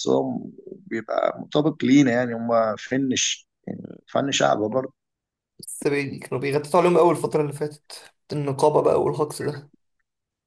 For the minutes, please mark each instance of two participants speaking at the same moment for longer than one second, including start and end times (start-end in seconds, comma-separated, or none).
none